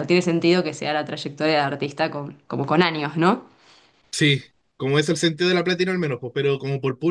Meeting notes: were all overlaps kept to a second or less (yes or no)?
yes